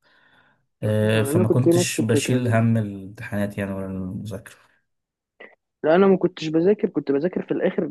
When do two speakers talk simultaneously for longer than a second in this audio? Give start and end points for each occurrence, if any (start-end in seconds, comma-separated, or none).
1.1-2.6